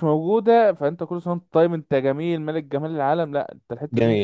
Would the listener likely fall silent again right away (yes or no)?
no